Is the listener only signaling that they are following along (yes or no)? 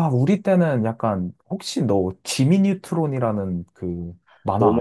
no